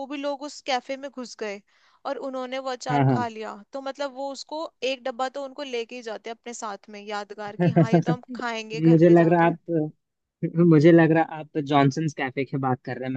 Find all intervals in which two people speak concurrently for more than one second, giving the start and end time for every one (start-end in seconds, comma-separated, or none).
7.6-9.5